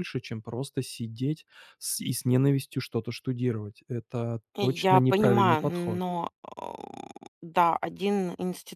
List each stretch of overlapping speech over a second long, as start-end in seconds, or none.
4.5-6.0